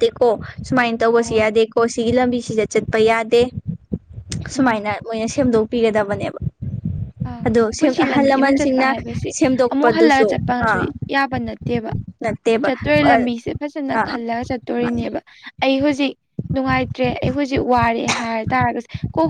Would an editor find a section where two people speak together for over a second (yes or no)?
no